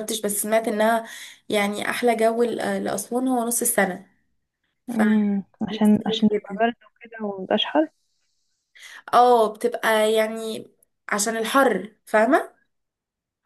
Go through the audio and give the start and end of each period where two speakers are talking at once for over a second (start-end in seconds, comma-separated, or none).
4.9-6.6